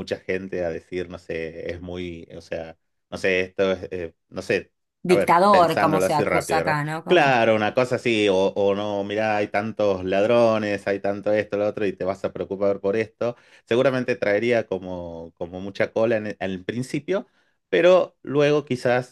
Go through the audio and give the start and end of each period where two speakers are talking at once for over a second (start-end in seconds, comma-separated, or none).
5.0-7.4